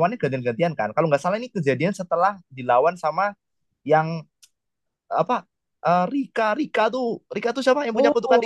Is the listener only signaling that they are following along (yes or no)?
no